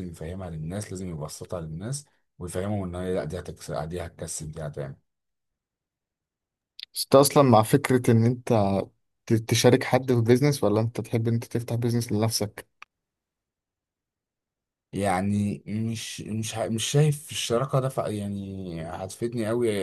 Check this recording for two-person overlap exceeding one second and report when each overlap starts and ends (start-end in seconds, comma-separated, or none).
none